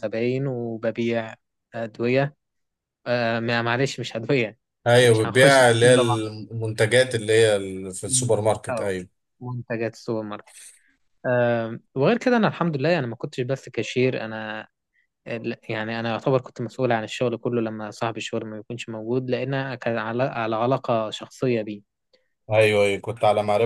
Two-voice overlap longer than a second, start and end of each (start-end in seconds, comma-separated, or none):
5.0-6.3